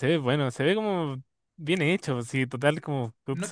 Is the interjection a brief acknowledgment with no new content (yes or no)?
no